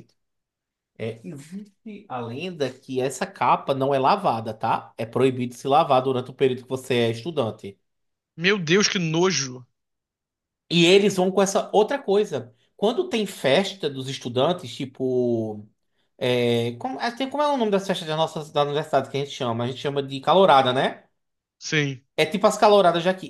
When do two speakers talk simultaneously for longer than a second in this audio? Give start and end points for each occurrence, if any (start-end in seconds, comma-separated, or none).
none